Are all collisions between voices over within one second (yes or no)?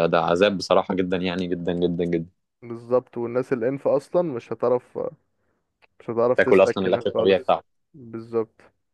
no